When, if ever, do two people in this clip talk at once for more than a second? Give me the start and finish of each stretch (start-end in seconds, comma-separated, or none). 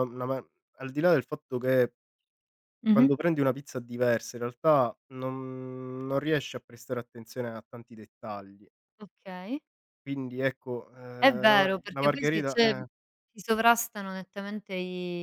11.2-12.7